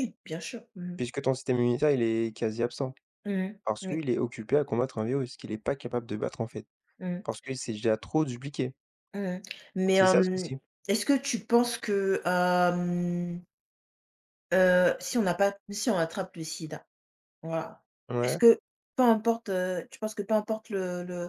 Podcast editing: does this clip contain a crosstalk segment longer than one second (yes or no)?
no